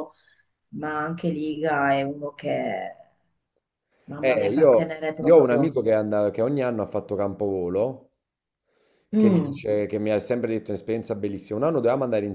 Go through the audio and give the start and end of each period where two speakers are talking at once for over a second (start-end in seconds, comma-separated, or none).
4.2-5.8